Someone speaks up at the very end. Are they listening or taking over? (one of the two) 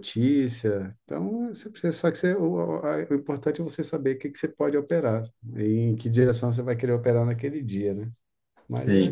taking over